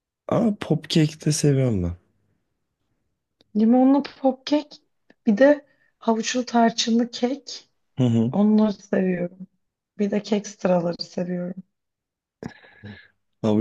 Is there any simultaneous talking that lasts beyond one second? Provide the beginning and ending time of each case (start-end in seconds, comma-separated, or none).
none